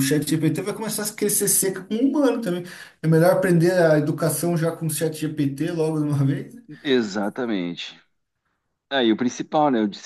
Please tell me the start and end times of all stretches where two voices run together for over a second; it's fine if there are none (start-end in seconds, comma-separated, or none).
none